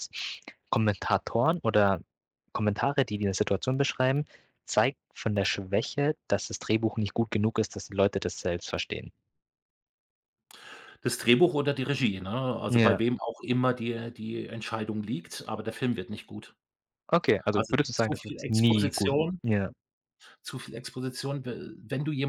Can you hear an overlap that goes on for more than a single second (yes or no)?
yes